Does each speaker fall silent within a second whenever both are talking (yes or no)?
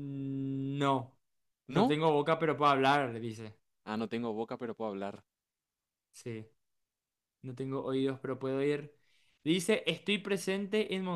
yes